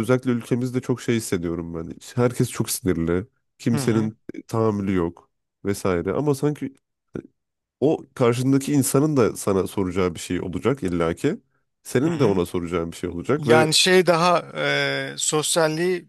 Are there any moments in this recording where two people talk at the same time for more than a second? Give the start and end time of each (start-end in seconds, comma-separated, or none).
none